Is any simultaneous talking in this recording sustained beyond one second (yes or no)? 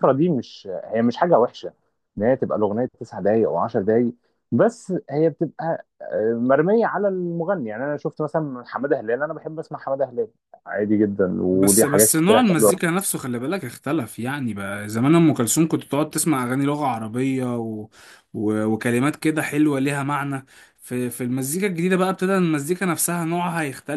yes